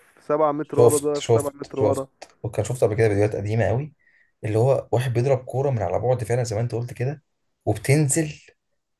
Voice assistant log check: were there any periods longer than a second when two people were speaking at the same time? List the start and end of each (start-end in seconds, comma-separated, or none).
0.6-2.1